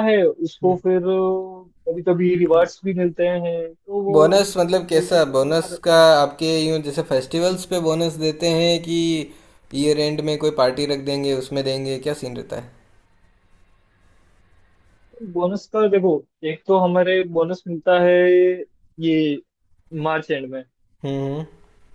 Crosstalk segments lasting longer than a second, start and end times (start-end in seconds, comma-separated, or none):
4.1-6.0